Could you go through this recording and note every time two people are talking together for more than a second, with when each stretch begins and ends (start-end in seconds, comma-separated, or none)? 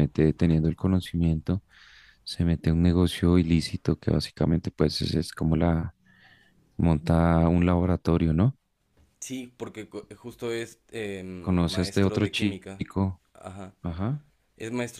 11.4-12.8